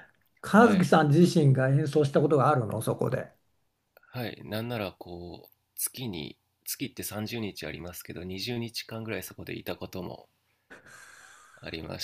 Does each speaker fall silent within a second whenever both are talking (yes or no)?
yes